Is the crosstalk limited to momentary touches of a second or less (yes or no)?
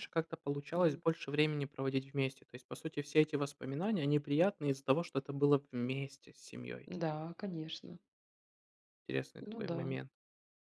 yes